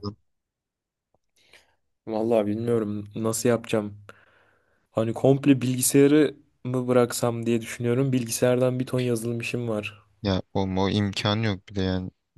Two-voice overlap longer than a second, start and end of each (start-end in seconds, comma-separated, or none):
none